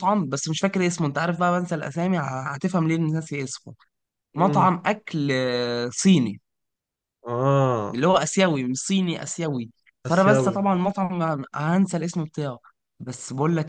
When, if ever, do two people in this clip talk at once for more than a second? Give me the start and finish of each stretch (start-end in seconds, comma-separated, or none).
none